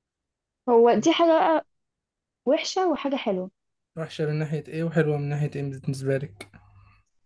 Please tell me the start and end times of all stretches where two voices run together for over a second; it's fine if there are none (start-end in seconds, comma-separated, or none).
none